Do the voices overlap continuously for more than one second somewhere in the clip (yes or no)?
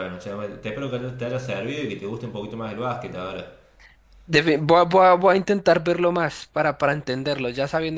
no